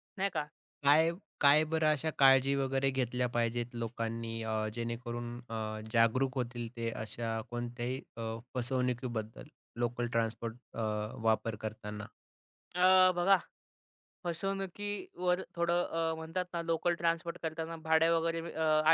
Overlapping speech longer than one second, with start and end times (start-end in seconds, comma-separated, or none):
none